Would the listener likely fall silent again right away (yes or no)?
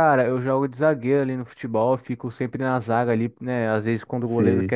yes